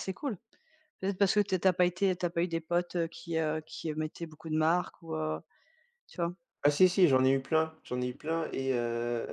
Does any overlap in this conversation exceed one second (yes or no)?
no